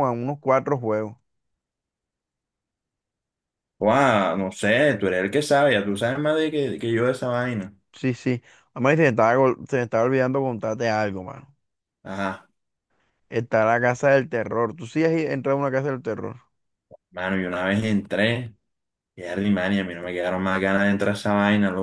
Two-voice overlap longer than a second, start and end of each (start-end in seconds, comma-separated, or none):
none